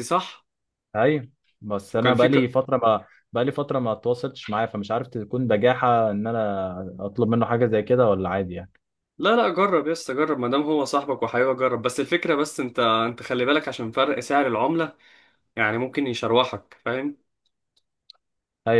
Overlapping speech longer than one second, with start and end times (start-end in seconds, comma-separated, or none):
none